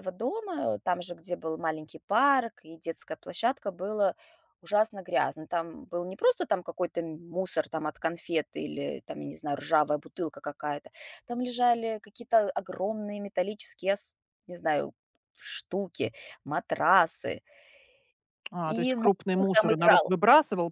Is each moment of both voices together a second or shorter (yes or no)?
no